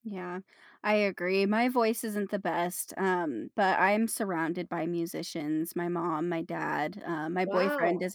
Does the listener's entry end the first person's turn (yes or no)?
no